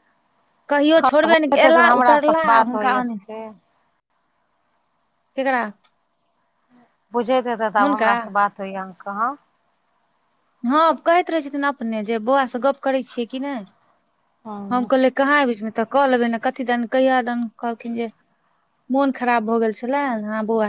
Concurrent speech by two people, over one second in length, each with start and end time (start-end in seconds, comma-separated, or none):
0.8-3.2